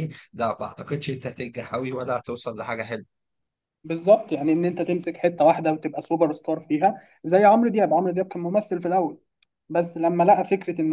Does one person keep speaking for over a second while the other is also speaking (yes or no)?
no